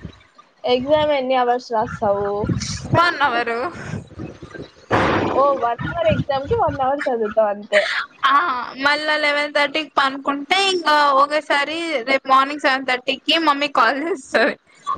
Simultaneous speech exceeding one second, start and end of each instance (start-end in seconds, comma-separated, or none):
none